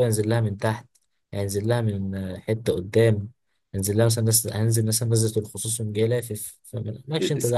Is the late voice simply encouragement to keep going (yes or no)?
no